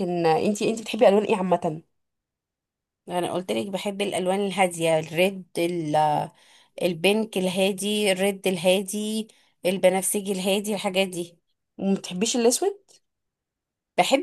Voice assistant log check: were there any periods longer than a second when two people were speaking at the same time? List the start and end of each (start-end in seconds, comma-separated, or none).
none